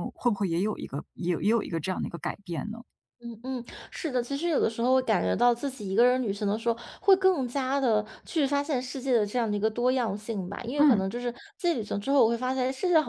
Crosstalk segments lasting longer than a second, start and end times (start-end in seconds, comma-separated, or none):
none